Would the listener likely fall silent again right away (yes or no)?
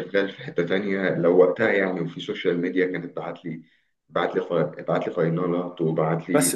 no